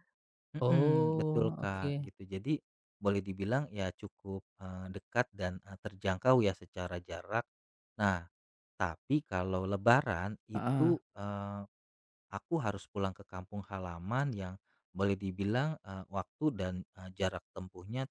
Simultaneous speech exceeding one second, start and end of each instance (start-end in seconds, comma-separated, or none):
0.6-2.1